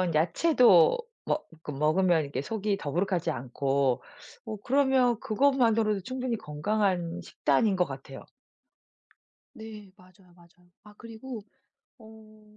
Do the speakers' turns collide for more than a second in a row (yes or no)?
no